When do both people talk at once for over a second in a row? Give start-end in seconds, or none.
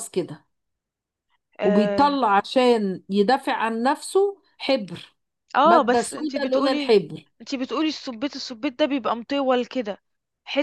5.7-7.0